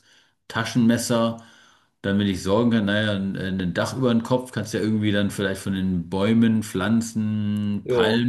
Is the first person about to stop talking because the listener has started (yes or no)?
no